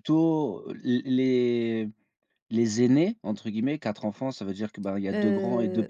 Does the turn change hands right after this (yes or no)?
yes